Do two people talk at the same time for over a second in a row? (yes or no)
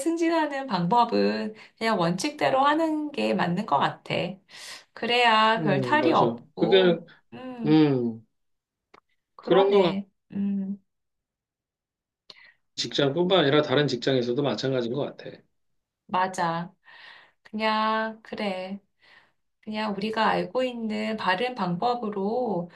yes